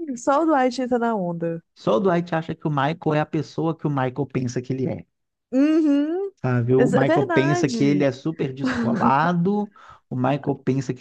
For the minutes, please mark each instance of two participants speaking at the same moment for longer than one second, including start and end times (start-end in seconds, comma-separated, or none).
6.8-8.1